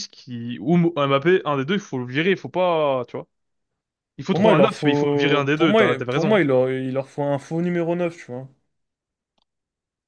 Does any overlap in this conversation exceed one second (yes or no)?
yes